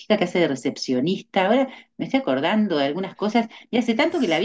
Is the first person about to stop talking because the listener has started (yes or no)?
no